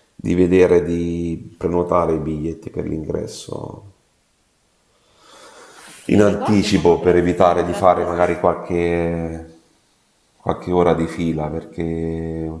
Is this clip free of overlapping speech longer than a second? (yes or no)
no